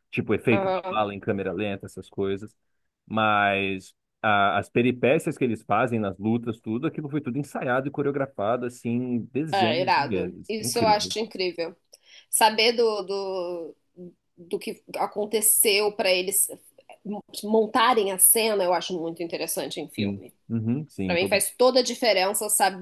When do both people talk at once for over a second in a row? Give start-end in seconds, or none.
9.5-11.1